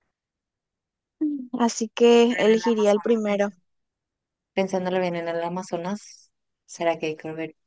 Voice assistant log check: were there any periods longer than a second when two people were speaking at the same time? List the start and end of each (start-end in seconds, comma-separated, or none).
2.3-3.5